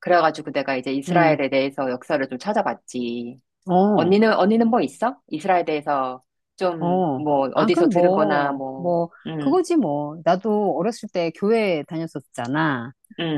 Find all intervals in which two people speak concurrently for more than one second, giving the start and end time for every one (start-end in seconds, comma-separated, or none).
6.8-9.6